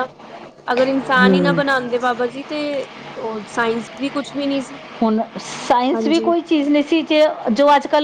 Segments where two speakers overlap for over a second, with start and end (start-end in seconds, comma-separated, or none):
none